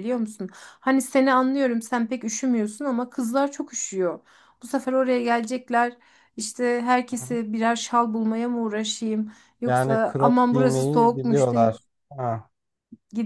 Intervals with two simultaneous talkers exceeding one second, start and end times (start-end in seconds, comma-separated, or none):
9.6-11.8